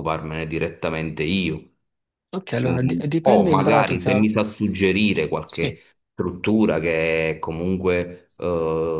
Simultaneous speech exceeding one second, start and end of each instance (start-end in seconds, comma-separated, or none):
2.6-4.3